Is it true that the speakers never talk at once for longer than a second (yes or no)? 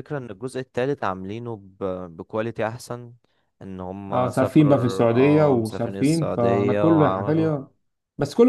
no